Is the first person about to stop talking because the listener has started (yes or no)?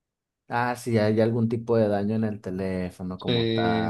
yes